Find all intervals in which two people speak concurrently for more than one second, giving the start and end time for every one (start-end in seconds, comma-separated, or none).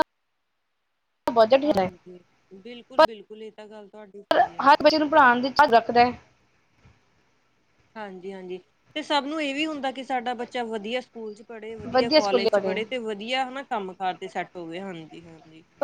none